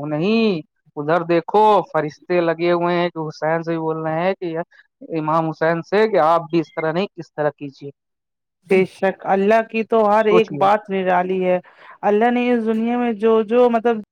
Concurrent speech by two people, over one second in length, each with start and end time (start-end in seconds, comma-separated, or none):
none